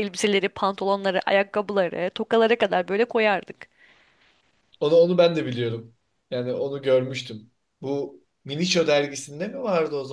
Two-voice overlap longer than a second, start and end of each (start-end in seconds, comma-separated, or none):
none